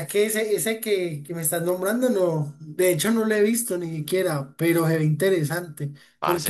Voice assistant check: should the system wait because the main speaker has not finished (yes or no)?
yes